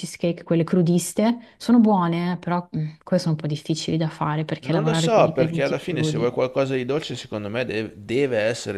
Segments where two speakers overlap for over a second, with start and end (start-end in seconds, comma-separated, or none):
4.6-6.3